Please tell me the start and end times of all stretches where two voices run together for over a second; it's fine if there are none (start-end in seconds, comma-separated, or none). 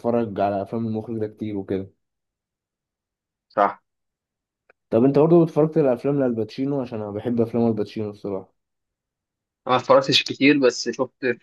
none